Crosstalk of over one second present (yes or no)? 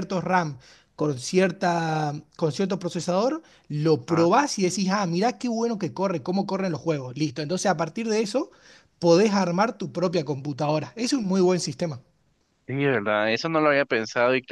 no